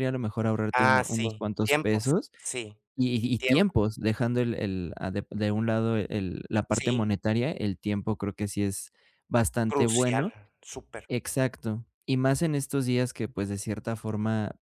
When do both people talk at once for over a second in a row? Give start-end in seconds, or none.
0.7-2.3